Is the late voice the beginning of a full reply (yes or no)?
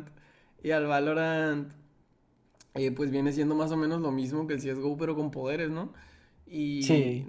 no